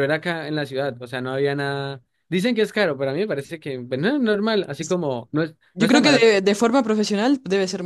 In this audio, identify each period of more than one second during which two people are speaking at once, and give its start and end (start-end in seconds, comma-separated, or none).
none